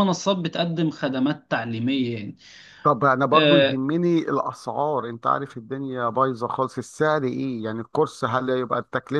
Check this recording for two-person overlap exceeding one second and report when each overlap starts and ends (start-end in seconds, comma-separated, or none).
none